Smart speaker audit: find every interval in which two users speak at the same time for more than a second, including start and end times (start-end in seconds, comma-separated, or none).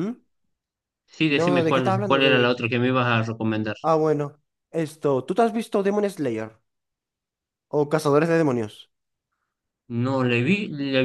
1.3-2.5